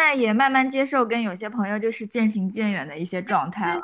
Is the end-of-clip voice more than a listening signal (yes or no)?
yes